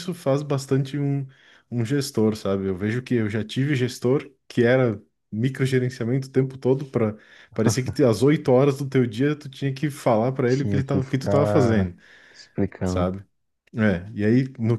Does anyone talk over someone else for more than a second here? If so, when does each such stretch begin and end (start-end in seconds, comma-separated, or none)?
10.5-11.9